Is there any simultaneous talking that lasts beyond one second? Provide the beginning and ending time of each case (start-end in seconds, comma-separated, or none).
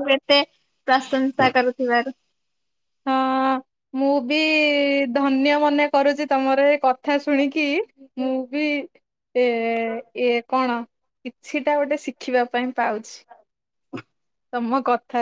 none